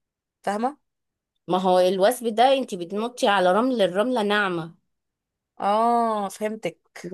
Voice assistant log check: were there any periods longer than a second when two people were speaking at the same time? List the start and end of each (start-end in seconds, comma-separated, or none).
none